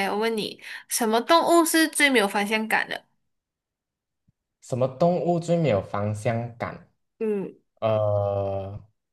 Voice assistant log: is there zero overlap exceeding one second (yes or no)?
yes